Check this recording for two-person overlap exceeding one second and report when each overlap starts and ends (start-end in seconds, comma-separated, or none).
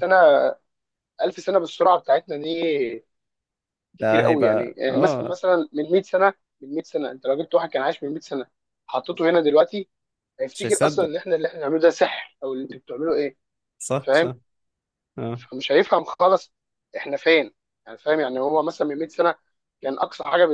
4.0-5.4